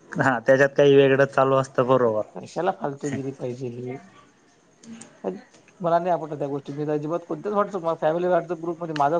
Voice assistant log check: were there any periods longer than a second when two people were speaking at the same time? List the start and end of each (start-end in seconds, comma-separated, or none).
none